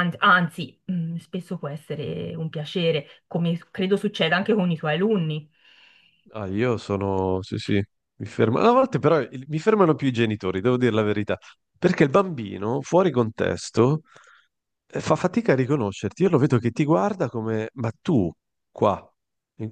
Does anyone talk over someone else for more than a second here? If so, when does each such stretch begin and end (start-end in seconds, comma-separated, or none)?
none